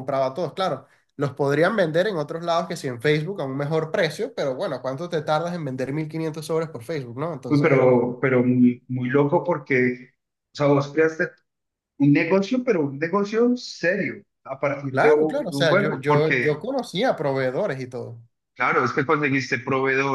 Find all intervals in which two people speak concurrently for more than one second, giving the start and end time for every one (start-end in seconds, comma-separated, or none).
14.9-16.5